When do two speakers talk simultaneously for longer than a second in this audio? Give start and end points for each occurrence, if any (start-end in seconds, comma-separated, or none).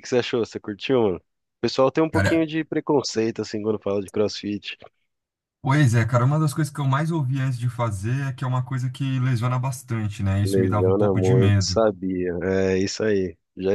10.4-11.8